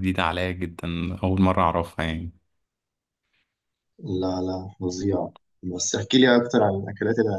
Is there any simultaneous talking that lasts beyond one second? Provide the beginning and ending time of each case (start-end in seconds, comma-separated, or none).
none